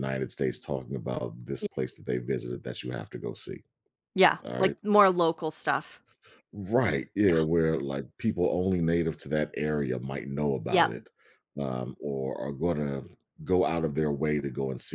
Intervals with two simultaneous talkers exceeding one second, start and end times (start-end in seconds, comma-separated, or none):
none